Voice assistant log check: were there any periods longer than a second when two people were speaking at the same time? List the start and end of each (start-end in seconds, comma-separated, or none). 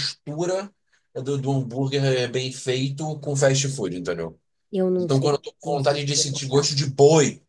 5.0-6.8